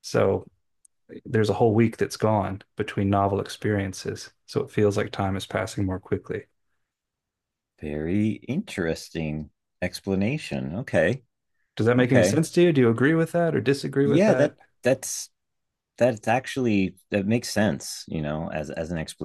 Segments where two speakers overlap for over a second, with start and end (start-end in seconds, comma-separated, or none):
none